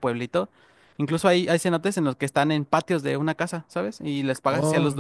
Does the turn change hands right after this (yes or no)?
no